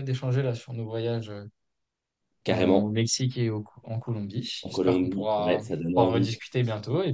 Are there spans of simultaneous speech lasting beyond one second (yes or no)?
yes